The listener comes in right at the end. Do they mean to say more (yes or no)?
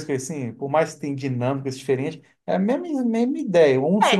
yes